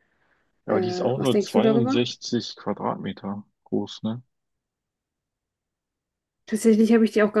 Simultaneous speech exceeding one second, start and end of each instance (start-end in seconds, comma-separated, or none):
0.7-2.0